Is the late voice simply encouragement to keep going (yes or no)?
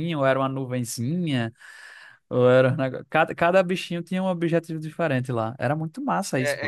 no